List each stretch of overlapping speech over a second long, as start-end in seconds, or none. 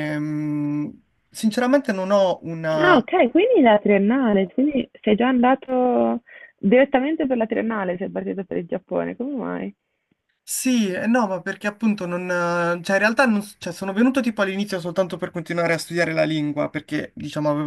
none